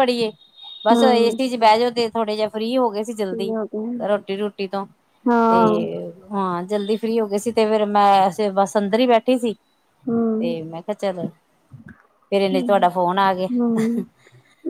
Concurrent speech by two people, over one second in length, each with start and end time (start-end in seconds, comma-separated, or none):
none